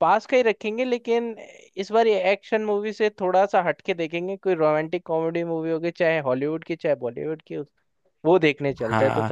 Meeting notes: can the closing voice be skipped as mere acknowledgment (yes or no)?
no